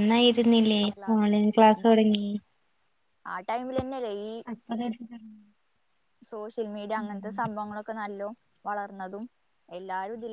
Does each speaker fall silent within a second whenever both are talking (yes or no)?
yes